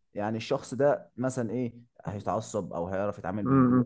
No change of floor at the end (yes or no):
no